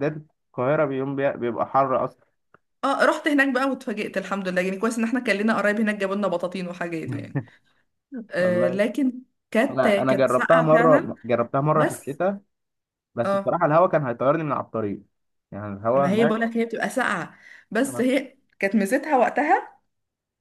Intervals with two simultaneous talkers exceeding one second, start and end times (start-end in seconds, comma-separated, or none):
9.7-11.1